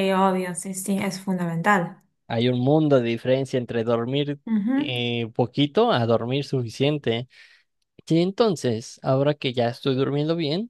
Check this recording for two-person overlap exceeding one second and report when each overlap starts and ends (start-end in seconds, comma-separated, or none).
none